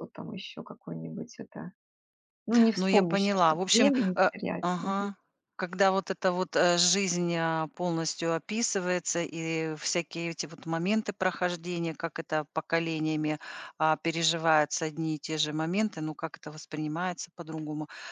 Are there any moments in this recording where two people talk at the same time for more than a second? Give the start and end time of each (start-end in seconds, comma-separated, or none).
2.8-5.1